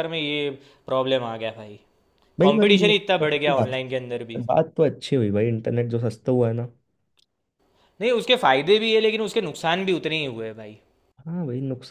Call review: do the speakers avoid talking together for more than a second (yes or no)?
no